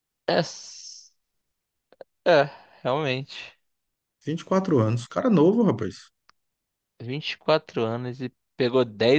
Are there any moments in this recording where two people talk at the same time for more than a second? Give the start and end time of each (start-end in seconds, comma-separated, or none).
none